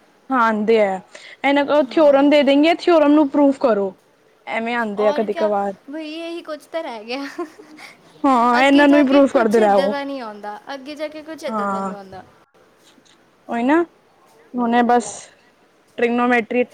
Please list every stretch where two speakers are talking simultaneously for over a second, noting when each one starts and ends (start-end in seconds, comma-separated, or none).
8.6-9.9